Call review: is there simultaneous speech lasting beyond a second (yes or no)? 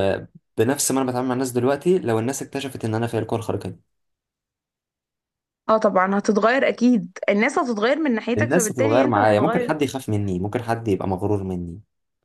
yes